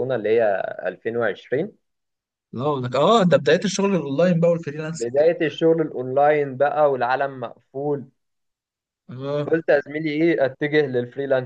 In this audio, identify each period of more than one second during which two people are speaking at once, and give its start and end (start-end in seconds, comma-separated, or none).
none